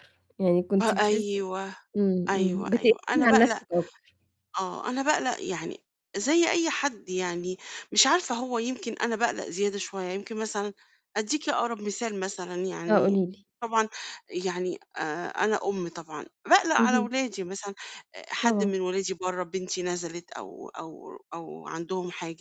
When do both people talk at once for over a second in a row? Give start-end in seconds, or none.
2.3-3.6